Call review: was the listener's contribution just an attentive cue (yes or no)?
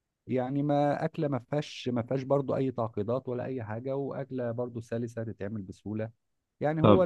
yes